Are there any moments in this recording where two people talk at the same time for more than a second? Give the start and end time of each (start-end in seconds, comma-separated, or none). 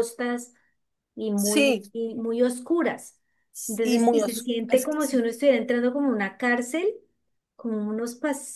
3.7-5.2